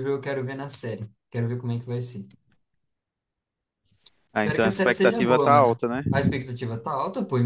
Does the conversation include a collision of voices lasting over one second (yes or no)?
yes